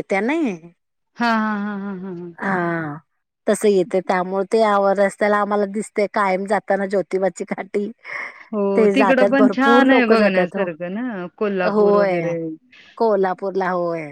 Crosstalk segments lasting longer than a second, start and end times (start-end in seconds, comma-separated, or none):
8.8-10.7